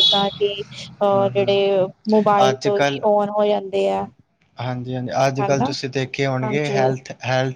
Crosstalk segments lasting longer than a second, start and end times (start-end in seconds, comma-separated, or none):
none